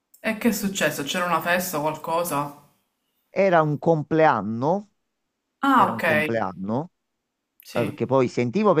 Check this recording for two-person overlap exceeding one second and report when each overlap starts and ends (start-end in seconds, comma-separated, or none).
none